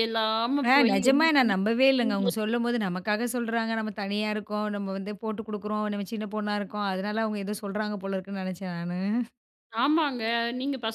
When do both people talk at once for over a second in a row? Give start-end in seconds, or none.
0.7-2.3